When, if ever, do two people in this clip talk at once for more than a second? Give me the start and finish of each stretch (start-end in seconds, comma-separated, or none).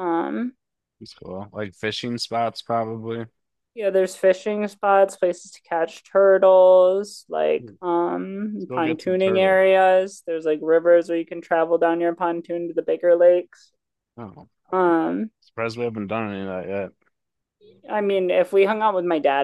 8.4-9.6